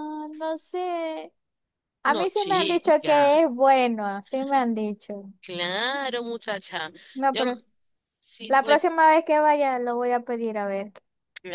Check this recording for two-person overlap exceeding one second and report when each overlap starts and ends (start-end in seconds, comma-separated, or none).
2.0-3.3